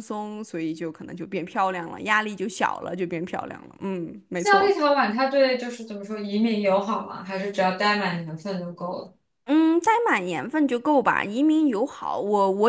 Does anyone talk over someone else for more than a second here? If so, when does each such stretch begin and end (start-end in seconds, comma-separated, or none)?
none